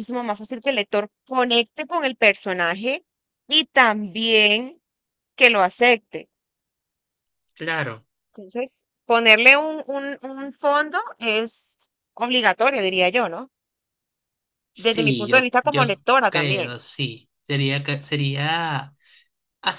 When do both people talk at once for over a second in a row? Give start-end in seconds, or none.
14.8-16.7